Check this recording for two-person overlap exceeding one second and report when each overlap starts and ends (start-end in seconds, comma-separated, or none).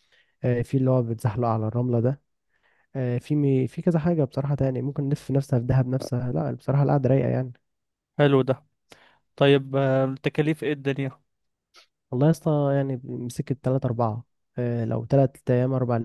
none